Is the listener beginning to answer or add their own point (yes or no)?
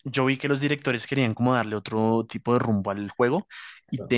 no